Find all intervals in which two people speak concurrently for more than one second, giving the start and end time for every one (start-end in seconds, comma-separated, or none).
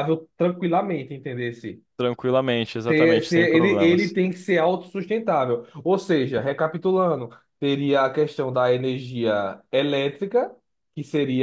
2.9-4.2